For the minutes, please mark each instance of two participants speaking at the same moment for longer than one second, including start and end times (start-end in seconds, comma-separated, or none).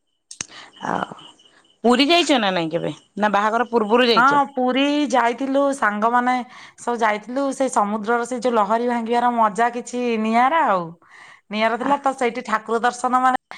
none